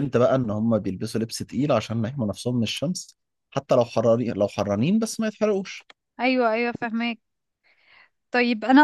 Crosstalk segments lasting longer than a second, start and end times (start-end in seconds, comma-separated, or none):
none